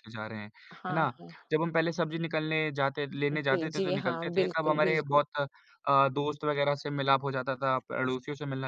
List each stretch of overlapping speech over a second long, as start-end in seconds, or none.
3.4-5.2